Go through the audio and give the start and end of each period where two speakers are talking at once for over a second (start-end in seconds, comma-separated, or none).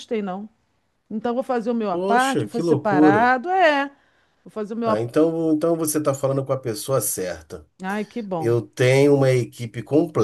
1.9-3.2